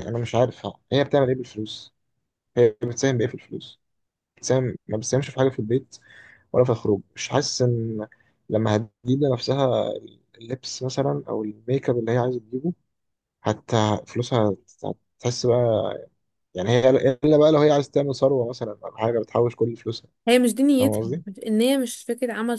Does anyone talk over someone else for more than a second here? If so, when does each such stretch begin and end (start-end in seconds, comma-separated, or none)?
none